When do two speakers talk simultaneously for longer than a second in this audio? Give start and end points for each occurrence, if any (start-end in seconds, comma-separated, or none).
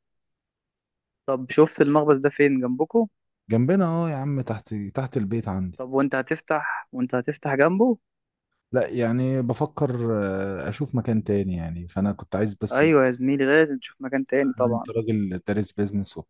none